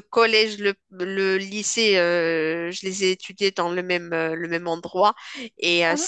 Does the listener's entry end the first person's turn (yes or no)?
no